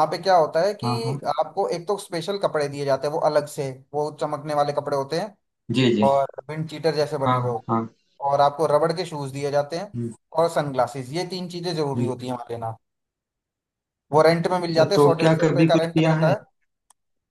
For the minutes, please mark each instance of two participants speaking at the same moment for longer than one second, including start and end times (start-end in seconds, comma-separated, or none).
14.7-16.4